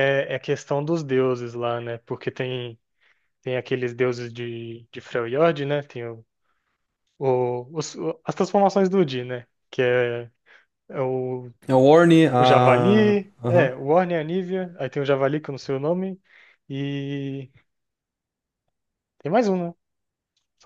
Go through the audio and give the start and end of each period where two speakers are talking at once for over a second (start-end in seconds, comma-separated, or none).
12.4-13.7